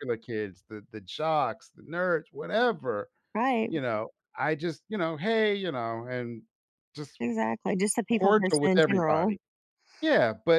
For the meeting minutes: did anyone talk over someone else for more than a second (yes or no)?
yes